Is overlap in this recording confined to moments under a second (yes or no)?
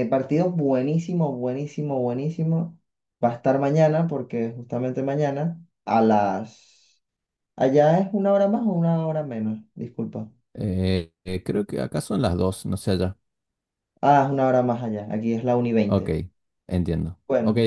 yes